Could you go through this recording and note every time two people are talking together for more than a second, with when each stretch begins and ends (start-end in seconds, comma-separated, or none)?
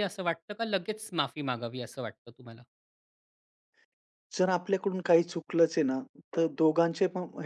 none